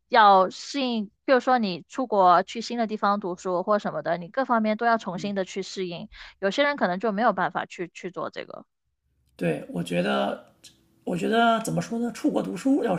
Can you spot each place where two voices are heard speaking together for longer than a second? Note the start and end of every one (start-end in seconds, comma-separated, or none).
none